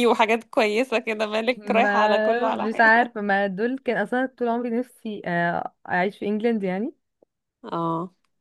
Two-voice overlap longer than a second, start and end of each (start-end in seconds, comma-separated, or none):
1.6-2.9